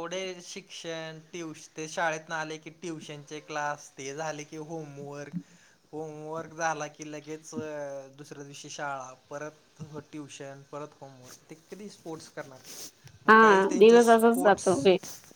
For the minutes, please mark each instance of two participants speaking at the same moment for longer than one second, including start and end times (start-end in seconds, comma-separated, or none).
13.3-14.7